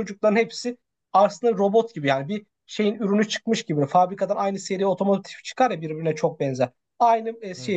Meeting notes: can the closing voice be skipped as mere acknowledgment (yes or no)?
yes